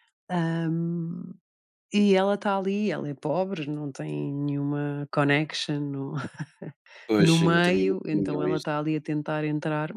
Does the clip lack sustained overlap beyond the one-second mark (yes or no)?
no